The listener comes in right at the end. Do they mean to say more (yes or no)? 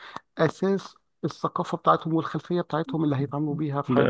yes